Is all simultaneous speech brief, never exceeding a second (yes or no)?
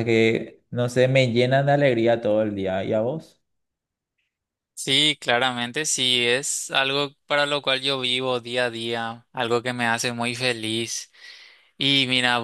yes